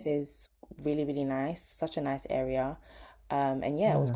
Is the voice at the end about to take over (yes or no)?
no